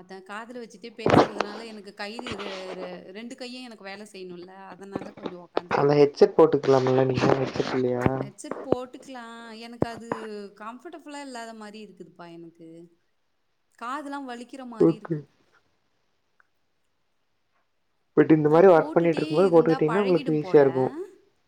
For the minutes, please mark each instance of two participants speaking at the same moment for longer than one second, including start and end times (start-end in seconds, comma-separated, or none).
18.6-20.6